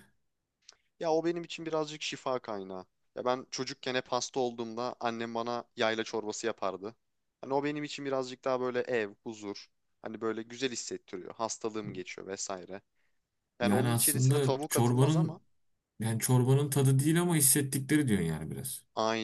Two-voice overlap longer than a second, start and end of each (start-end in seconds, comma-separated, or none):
13.6-15.4